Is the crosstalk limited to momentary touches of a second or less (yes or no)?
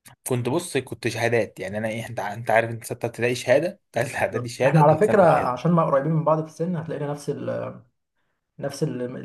no